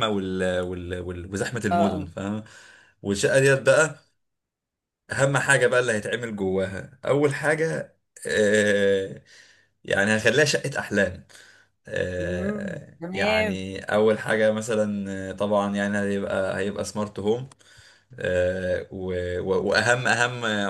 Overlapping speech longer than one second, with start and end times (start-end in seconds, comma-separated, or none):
12.2-13.7